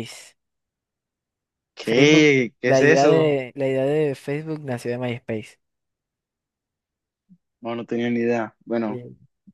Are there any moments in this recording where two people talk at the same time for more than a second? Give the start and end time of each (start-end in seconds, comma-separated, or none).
1.8-3.4